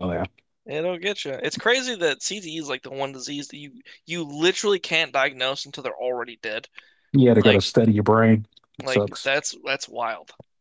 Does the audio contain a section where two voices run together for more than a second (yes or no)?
no